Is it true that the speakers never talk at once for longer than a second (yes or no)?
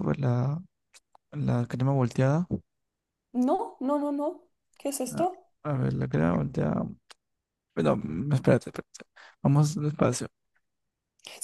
yes